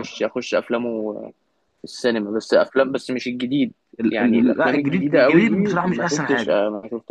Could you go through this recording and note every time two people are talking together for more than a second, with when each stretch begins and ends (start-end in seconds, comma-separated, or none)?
4.1-6.6